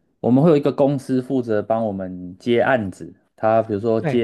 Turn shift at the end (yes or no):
no